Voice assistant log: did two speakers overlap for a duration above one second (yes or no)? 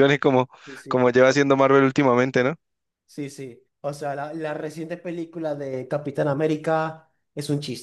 no